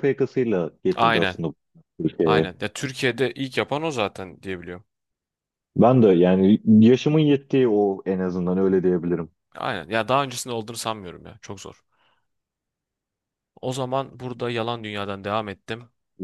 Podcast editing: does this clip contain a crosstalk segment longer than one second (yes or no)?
no